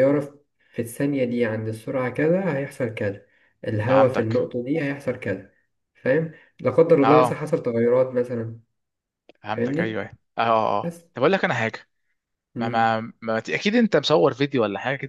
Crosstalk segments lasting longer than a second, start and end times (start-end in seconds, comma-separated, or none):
none